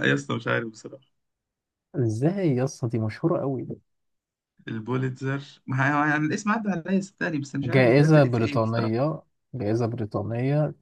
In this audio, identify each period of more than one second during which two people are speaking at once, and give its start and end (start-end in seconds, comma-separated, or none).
7.6-9.0